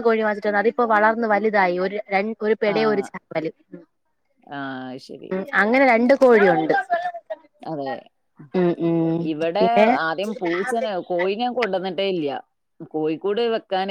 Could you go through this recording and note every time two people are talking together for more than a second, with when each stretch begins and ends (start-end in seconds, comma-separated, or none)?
none